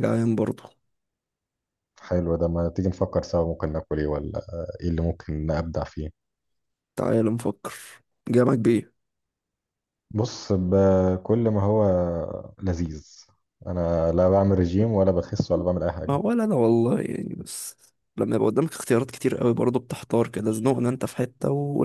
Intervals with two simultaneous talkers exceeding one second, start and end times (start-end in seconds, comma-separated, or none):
none